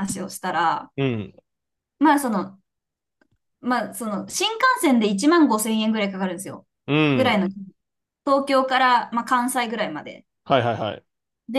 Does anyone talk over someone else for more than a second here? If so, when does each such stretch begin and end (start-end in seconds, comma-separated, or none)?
none